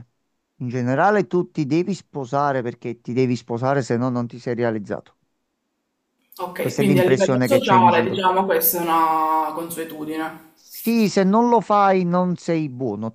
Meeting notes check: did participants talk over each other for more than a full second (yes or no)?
yes